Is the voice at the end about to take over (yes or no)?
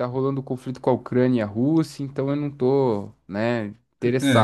yes